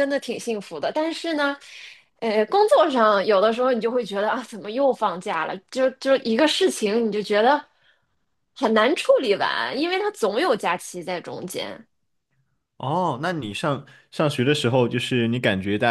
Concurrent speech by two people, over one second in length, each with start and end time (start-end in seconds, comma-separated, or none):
none